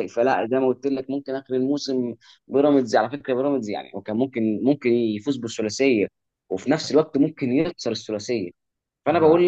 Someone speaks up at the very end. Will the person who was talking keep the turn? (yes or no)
yes